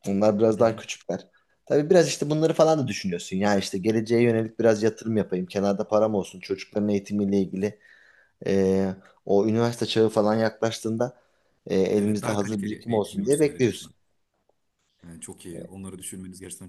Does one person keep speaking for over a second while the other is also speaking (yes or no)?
yes